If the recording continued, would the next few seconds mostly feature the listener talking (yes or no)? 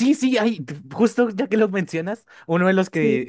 no